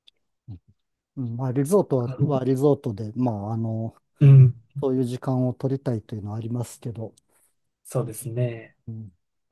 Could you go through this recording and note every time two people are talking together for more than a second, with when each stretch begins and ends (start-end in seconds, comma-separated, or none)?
none